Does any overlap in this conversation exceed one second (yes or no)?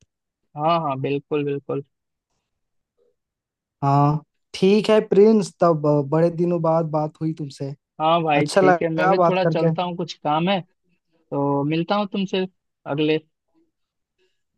yes